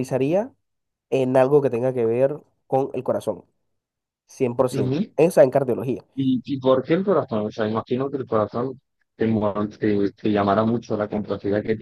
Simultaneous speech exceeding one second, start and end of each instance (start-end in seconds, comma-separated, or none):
none